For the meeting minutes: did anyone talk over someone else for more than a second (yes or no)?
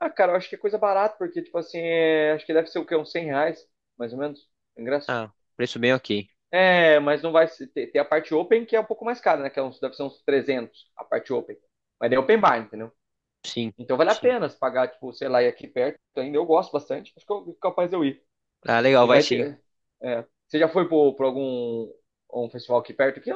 no